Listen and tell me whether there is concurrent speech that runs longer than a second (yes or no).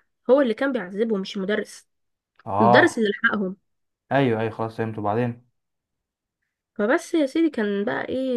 no